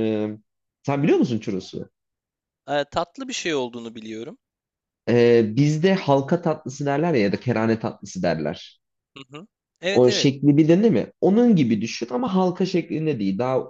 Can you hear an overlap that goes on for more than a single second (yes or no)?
no